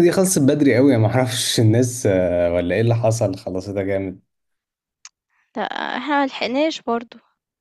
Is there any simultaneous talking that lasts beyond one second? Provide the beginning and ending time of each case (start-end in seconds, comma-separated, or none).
none